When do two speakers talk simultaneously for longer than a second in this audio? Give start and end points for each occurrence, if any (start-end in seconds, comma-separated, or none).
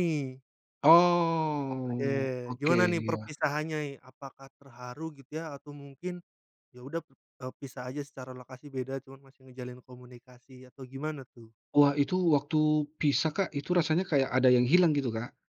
1.8-3.3